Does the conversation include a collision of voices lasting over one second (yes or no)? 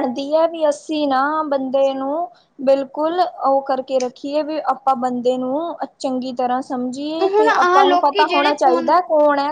yes